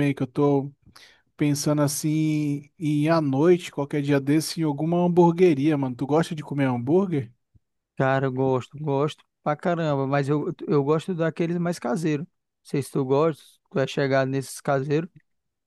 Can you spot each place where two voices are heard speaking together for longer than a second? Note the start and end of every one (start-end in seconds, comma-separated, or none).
none